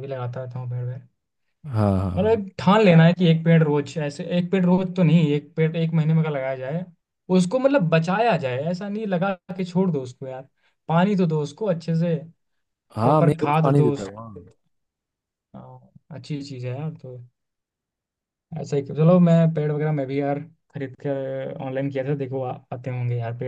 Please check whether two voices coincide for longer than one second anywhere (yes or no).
yes